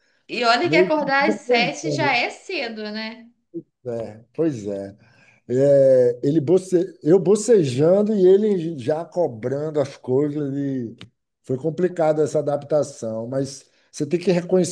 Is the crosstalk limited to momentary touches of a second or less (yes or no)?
no